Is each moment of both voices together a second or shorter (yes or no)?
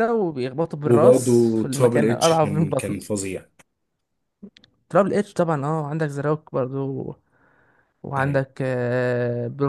no